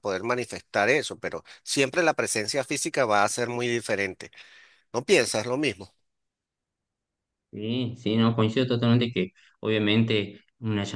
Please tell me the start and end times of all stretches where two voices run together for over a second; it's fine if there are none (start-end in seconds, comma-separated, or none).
none